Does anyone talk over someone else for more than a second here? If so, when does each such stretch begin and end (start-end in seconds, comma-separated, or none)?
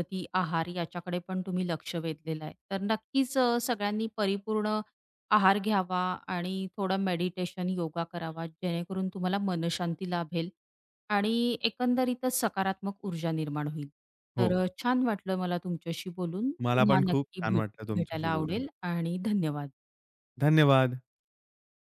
16.6-18.6